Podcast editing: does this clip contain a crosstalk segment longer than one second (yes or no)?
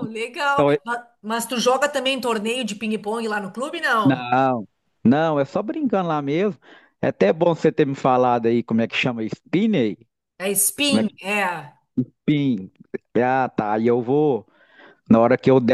no